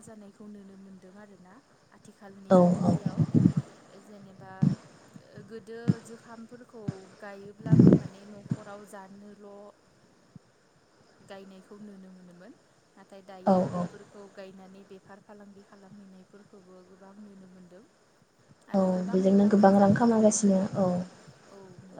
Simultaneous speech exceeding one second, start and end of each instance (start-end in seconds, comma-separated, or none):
18.8-20.9